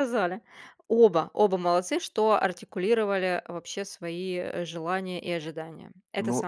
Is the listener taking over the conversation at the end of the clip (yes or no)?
yes